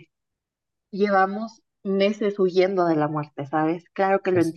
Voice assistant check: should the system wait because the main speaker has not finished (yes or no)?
yes